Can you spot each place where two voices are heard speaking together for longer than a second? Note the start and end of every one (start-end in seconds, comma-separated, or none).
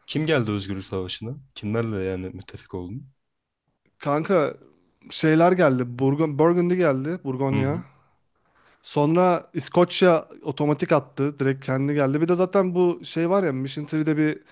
none